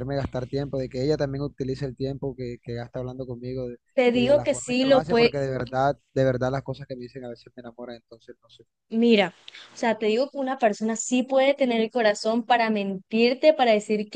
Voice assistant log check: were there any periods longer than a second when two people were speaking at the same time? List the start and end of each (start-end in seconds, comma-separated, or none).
4.0-5.3